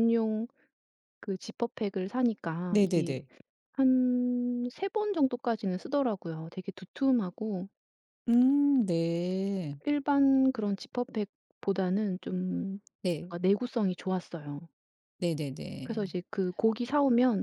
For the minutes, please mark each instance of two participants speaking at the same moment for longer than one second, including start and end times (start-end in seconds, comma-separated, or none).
none